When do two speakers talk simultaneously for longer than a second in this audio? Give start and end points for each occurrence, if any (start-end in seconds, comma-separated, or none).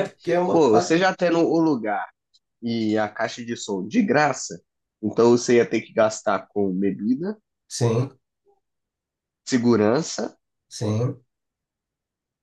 none